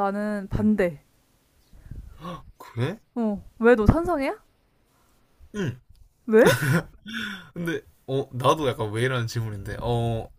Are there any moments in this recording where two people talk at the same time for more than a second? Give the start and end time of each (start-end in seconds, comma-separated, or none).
none